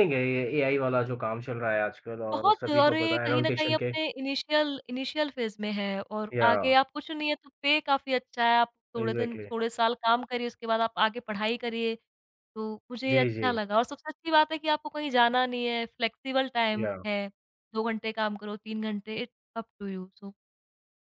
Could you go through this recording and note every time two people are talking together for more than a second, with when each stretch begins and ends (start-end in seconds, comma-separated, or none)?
2.3-3.9